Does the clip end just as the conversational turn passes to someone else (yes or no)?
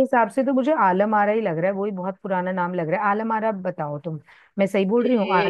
yes